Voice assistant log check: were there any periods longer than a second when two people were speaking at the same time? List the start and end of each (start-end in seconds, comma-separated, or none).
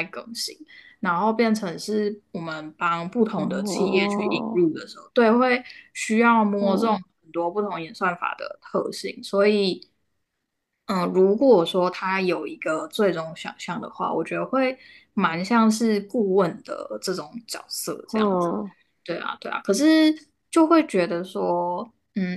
3.4-4.6